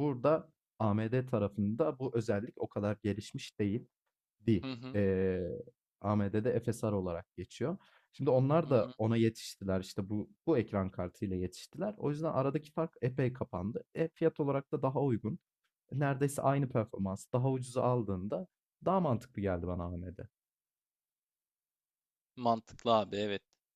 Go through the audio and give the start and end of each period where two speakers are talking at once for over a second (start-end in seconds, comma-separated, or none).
none